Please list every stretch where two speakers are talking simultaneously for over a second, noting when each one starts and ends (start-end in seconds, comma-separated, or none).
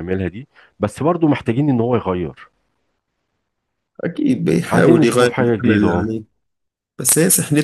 4.7-6.1